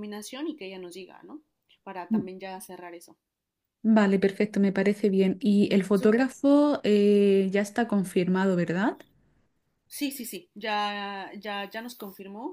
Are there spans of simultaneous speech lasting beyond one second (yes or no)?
no